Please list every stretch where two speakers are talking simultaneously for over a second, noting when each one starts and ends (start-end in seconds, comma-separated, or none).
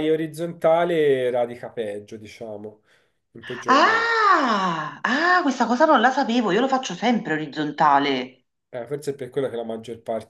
none